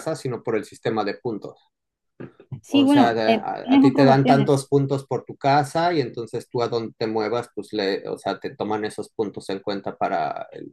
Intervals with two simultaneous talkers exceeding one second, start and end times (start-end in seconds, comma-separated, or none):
2.7-4.5